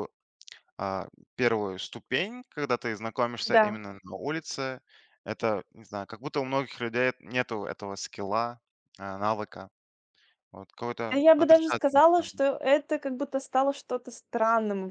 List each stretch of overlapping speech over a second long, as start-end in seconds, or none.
11.1-12.3